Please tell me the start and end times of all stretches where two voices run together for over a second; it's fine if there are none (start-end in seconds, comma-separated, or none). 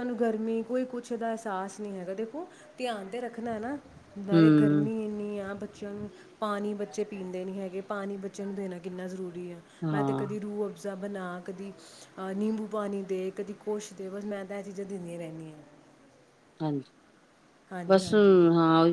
none